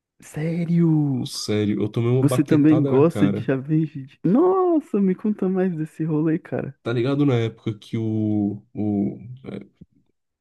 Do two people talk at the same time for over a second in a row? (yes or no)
yes